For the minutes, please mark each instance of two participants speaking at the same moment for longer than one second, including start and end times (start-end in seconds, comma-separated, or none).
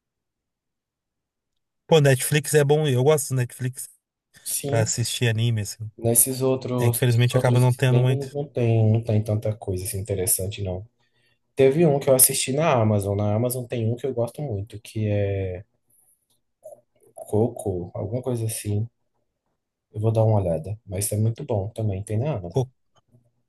6.8-8.4